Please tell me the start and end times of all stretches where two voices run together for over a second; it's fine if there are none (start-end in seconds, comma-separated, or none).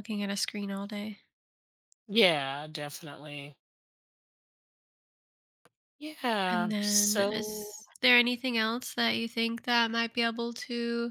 6.5-7.8